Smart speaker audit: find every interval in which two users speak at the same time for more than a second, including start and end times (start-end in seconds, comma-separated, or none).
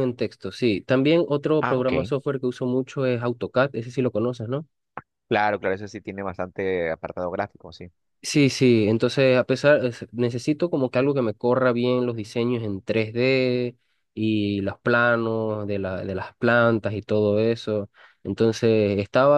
none